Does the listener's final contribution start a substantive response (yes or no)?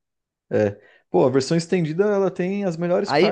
yes